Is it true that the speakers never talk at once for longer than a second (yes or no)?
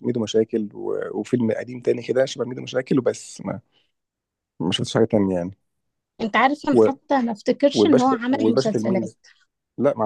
no